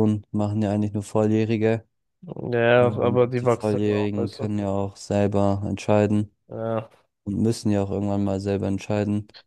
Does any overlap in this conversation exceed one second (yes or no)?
yes